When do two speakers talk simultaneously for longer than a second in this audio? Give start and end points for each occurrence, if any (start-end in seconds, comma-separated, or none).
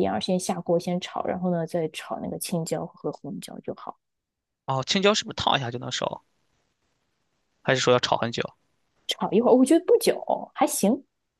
none